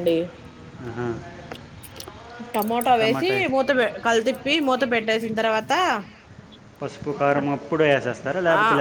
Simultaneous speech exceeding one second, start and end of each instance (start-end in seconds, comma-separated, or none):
none